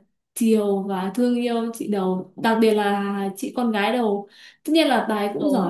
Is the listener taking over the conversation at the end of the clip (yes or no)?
no